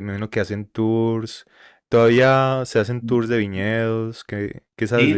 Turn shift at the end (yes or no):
yes